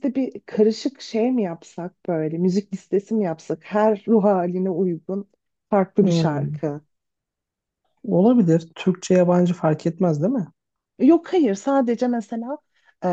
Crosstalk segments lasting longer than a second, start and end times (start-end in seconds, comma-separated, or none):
none